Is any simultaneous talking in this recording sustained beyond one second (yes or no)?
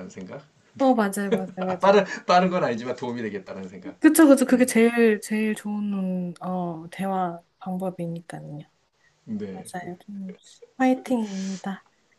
no